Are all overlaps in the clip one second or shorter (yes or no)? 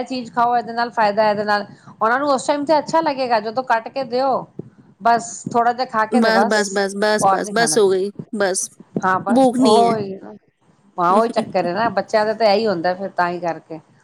yes